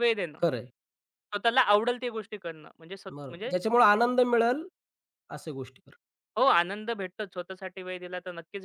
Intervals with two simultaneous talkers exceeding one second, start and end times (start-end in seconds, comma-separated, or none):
none